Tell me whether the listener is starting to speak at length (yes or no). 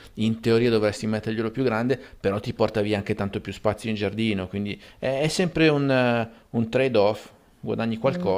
yes